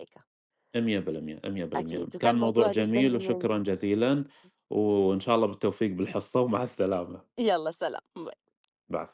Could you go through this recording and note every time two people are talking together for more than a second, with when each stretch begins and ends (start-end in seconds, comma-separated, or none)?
1.8-3.5